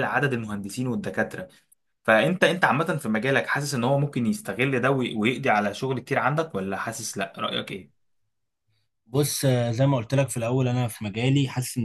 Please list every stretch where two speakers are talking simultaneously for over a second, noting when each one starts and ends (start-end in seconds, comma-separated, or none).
none